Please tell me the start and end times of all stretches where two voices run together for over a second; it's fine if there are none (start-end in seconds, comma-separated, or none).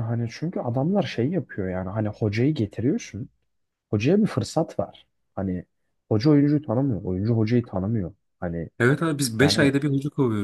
none